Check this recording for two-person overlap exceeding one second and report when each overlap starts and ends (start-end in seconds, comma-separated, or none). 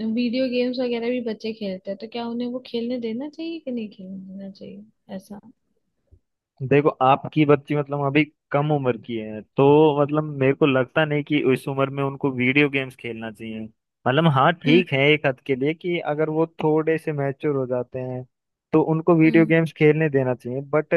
none